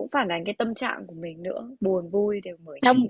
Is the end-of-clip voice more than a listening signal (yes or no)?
yes